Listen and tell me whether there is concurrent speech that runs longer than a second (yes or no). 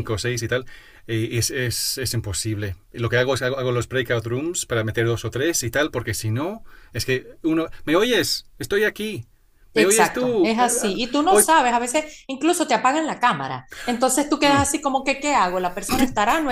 yes